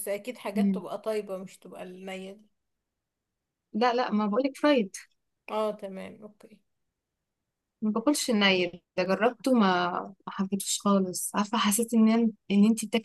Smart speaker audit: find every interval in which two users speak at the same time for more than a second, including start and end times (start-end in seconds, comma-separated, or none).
none